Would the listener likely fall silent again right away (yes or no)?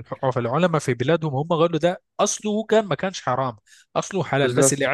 yes